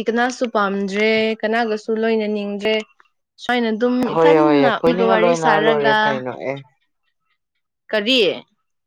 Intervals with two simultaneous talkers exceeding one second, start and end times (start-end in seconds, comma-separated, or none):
4.1-6.0